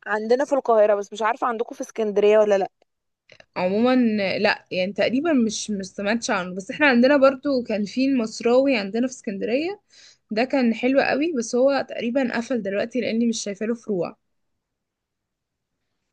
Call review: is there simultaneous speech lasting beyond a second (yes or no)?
no